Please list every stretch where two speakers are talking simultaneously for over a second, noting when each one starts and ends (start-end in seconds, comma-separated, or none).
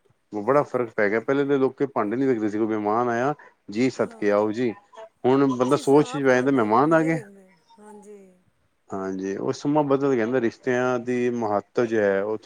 5.6-7.2